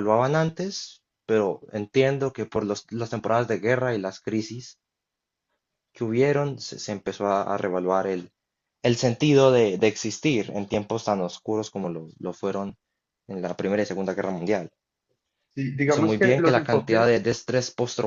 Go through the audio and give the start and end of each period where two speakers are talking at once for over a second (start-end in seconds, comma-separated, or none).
15.8-17.3